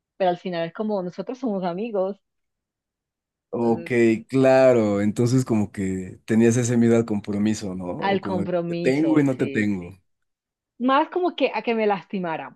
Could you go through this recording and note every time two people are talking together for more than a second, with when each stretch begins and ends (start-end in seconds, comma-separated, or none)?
8.0-9.7